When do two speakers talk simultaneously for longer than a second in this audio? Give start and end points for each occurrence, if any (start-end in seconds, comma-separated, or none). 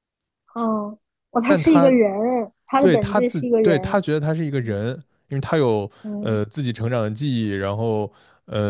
2.8-4.0